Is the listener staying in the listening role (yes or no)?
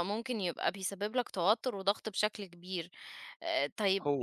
yes